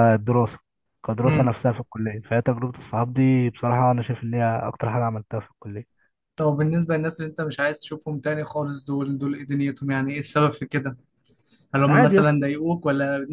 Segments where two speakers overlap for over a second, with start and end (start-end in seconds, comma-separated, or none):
none